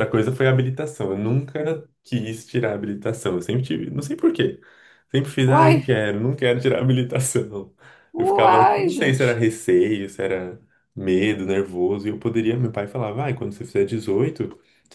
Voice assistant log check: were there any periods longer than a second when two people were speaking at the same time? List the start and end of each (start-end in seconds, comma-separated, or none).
8.2-9.4